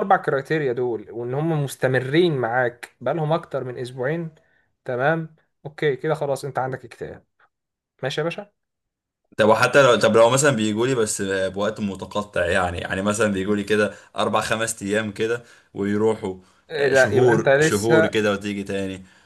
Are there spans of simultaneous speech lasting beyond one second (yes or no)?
yes